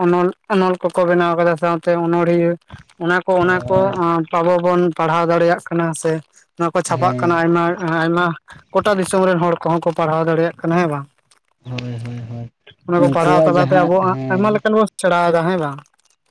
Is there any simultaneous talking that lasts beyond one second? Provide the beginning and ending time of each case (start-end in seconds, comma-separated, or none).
13.0-14.6